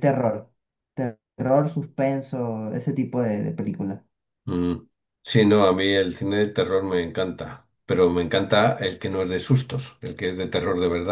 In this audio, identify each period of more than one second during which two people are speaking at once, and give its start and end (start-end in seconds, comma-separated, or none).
none